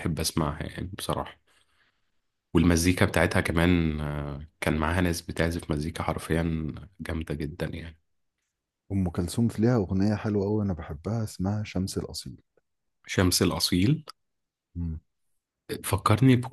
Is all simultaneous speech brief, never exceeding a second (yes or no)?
yes